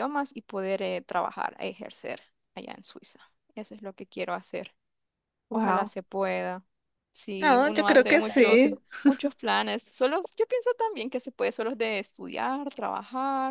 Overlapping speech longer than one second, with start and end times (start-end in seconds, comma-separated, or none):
7.4-8.7